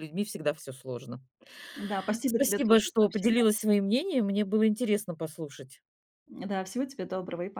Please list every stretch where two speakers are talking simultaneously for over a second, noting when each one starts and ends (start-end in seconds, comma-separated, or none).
2.2-3.5